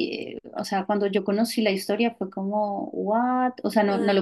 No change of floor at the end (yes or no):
yes